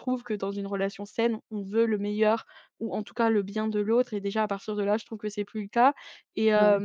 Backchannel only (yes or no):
yes